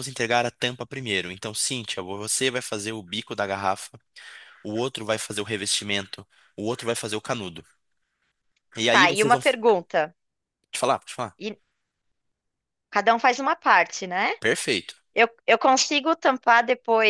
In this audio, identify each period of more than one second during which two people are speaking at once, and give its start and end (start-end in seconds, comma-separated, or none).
none